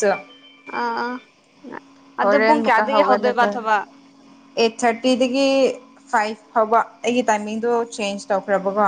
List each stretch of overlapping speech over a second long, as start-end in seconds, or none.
2.2-3.5